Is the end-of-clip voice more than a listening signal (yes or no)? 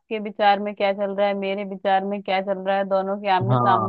no